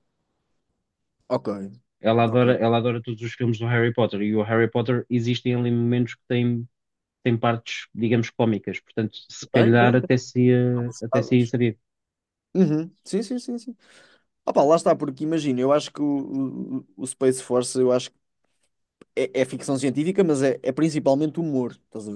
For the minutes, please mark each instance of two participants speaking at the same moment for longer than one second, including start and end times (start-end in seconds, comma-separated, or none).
none